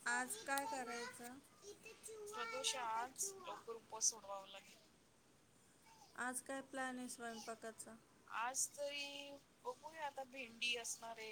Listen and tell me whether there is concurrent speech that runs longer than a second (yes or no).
no